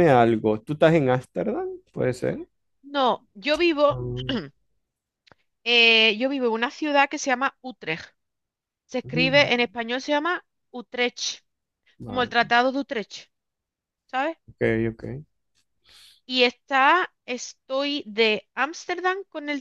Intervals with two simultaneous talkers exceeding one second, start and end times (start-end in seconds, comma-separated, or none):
none